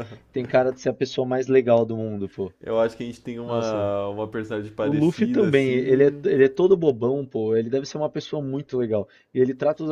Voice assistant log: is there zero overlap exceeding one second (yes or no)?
no